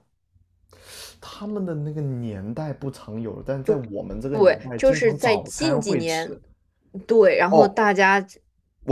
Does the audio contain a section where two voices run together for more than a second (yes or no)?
yes